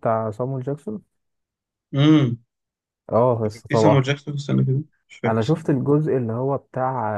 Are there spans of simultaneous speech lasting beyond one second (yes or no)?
no